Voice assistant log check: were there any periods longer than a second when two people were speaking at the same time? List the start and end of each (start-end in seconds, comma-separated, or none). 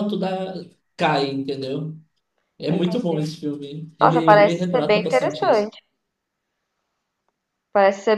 4.0-5.7